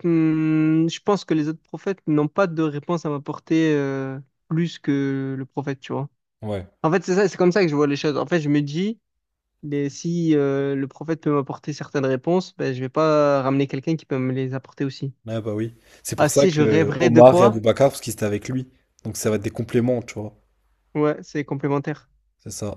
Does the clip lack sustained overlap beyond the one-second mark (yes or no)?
no